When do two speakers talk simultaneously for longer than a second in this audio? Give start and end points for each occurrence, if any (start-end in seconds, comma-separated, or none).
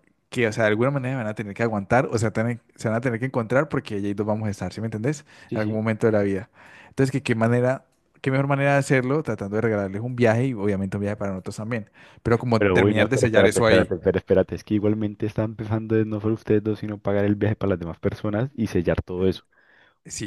12.6-13.9